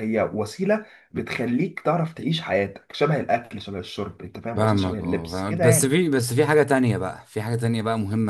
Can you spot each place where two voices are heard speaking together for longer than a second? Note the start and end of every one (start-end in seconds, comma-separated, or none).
4.5-5.9